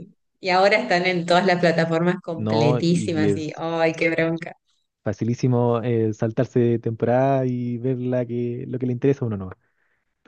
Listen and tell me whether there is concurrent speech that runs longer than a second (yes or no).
yes